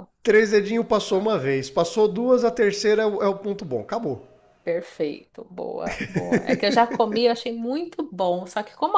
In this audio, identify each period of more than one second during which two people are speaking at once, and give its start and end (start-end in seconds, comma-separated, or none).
none